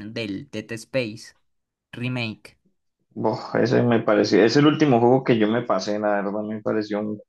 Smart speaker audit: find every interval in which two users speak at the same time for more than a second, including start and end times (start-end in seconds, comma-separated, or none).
none